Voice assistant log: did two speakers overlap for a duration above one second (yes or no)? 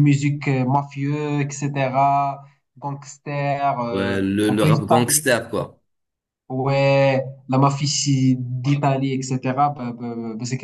yes